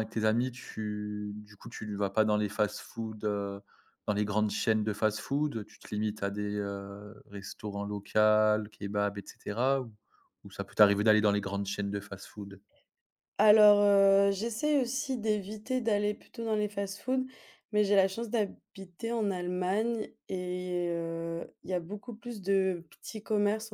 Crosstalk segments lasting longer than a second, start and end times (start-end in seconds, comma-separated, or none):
none